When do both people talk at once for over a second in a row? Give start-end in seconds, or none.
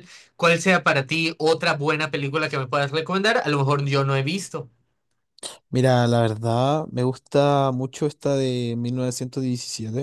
none